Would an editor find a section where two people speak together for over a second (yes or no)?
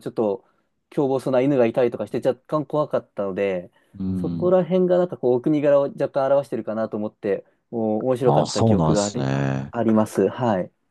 yes